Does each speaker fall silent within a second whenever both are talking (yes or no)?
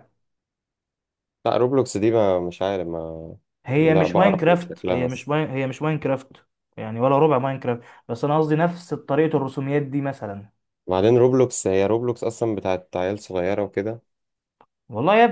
no